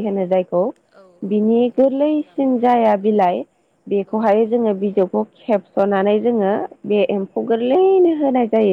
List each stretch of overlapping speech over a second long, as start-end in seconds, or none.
1.3-3.3